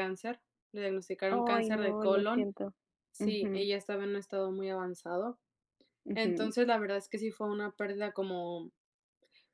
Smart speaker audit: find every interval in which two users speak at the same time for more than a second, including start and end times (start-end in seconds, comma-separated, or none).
1.3-2.5